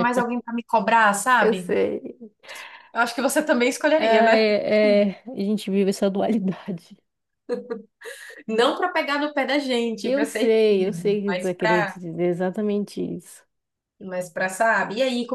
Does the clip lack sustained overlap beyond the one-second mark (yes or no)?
no